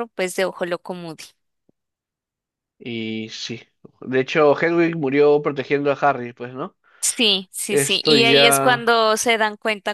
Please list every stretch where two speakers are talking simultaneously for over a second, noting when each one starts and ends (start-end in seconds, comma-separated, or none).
7.7-8.9